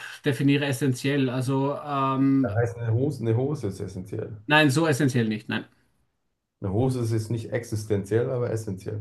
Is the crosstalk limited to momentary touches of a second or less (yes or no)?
yes